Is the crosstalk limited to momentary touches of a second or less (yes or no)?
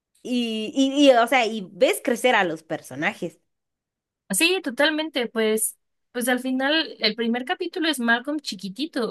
yes